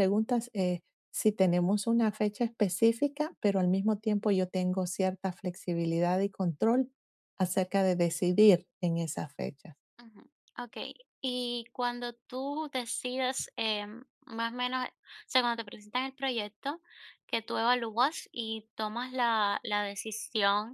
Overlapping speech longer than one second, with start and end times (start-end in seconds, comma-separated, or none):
none